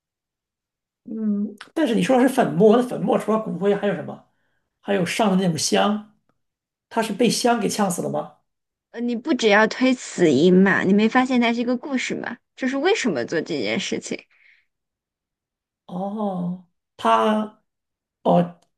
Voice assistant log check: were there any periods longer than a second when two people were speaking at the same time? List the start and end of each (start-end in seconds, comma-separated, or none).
none